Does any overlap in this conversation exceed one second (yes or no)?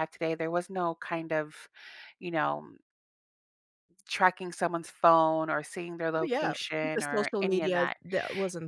yes